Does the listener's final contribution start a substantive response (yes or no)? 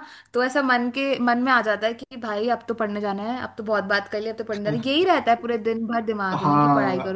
yes